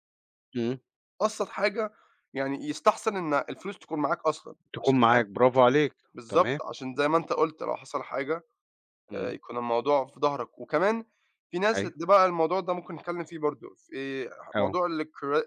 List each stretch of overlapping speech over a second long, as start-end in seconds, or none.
none